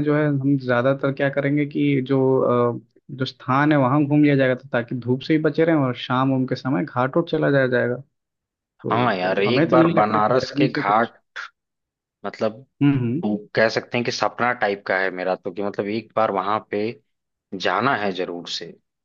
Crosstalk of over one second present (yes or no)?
yes